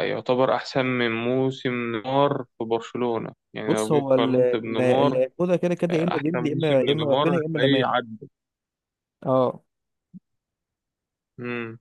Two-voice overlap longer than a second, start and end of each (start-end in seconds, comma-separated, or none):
3.7-5.2, 5.9-7.9